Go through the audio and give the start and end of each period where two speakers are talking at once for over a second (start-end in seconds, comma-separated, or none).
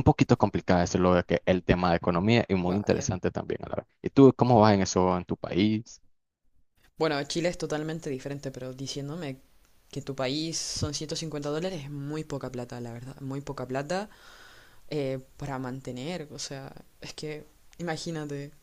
none